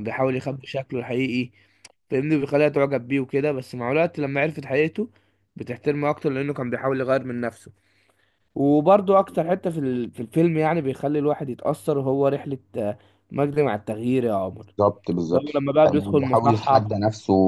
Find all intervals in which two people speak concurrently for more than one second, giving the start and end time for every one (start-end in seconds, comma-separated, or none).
15.3-17.0